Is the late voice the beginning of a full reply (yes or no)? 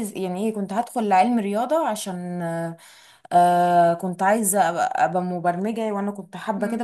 yes